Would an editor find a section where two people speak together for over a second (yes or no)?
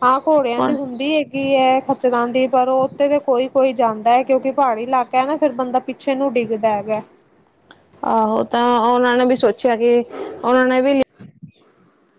no